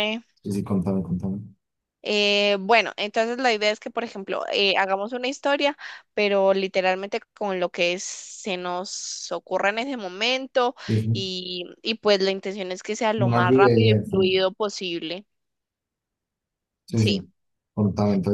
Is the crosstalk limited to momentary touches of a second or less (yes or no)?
no